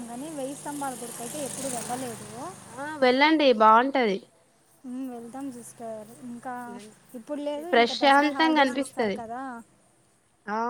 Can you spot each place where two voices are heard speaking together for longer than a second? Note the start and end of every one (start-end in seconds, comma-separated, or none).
7.7-9.2